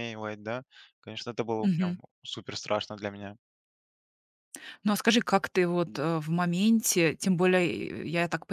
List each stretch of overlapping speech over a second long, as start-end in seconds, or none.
none